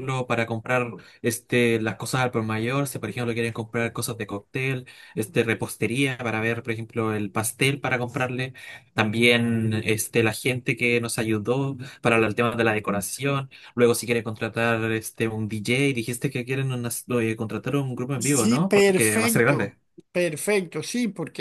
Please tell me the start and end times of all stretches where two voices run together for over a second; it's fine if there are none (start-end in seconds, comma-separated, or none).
18.2-19.8